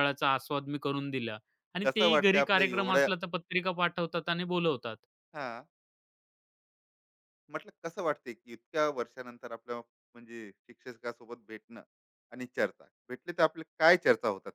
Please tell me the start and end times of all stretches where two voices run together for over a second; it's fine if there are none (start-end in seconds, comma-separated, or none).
1.8-3.1